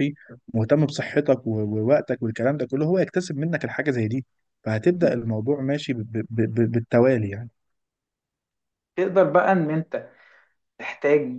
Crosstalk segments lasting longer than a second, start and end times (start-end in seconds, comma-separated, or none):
none